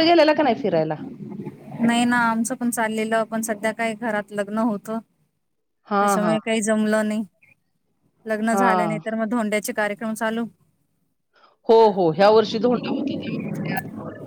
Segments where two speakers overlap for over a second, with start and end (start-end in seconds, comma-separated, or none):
none